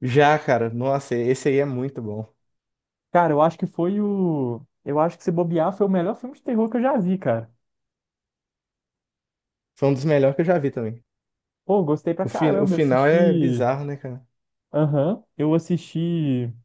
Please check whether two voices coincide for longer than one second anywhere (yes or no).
yes